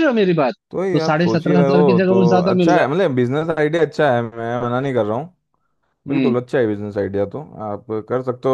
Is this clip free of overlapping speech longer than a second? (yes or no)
no